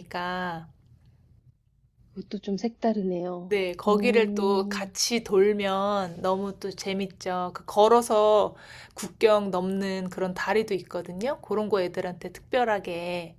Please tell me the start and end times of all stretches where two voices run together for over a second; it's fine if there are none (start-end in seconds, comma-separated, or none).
3.5-4.8